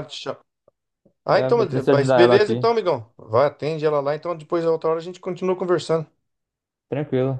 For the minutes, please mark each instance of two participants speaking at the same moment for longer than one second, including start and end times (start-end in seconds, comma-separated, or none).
1.3-2.7